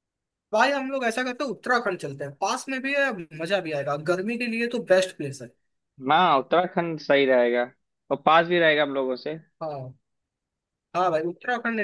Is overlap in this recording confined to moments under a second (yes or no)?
yes